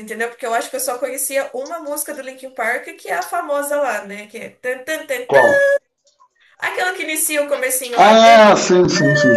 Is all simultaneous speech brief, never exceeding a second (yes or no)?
yes